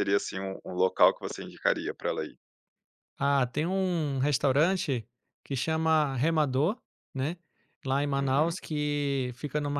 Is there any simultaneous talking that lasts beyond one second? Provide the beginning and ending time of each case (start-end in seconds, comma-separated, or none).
none